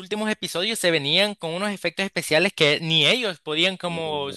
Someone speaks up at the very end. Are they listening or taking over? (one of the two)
listening